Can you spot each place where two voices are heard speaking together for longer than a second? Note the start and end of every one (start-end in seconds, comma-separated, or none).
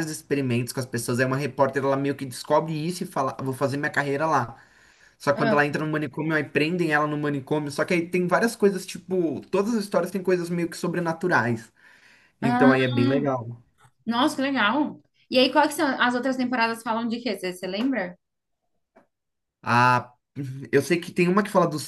none